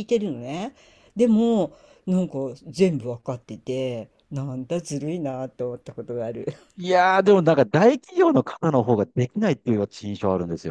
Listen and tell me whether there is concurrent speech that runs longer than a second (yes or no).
no